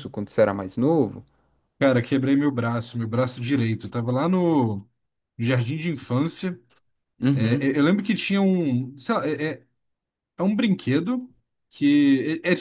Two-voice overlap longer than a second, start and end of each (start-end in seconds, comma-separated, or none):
none